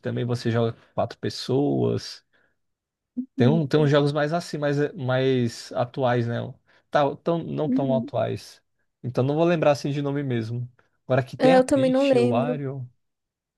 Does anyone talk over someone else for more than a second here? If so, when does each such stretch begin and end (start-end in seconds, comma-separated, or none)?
11.4-12.6